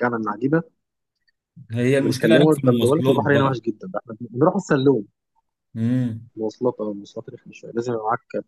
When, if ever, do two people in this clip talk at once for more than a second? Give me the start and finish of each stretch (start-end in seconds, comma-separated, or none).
2.0-3.6